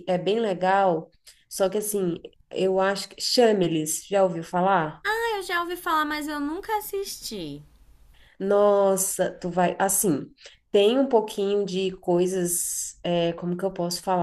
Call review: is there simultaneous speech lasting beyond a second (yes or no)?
no